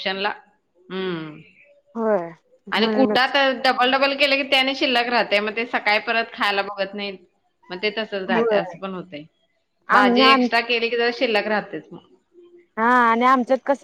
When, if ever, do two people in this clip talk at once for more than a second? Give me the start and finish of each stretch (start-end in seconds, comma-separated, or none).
none